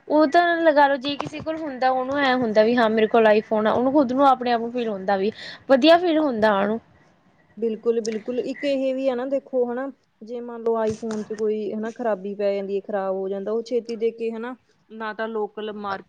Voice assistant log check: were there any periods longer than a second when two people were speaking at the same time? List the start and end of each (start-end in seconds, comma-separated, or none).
none